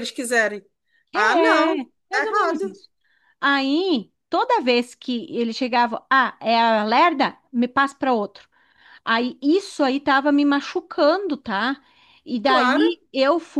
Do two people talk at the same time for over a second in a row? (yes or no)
yes